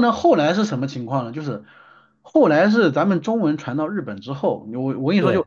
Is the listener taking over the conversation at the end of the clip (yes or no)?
no